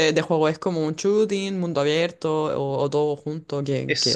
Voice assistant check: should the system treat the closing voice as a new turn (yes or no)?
yes